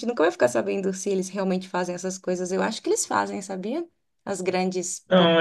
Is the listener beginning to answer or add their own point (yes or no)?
yes